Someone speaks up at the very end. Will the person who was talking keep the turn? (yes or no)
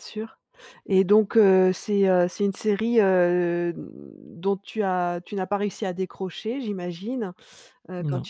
yes